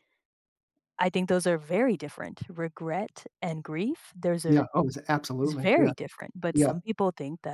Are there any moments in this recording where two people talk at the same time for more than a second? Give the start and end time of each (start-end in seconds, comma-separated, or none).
none